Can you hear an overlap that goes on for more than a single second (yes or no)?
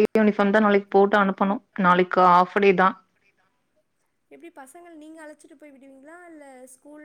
no